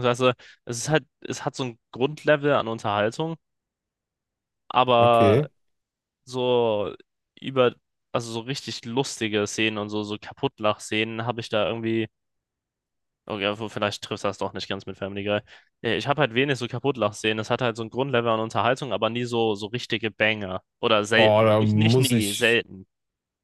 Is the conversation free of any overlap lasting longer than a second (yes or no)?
no